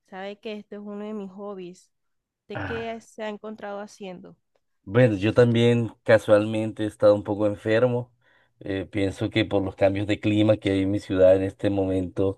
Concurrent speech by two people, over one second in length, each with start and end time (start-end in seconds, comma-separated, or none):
none